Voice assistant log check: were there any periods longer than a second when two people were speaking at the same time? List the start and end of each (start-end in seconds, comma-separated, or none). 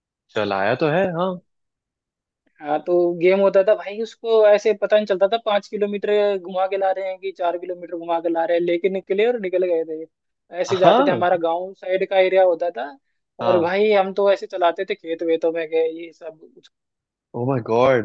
none